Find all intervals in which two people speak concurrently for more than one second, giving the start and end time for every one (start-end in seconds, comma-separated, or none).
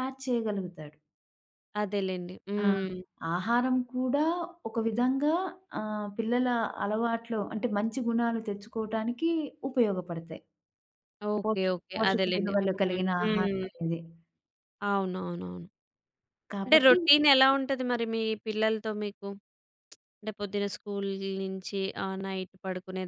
11.4-13.6